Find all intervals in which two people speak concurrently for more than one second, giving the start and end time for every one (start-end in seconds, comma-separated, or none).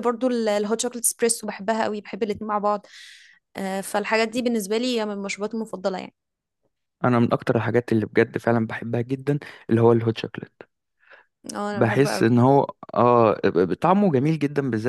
none